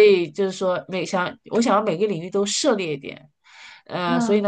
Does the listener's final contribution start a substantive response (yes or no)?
no